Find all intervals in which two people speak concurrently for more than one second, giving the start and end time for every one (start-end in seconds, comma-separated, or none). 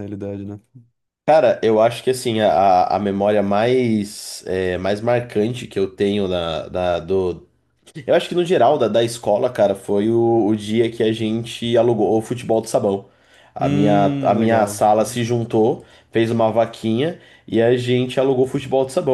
13.6-14.8